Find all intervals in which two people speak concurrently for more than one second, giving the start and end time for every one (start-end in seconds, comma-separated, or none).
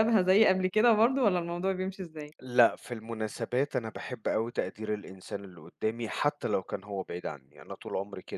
none